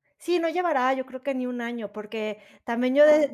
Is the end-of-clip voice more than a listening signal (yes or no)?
no